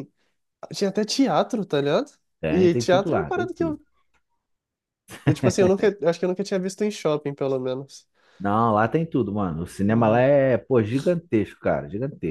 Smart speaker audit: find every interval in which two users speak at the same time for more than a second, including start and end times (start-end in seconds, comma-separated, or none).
2.5-3.8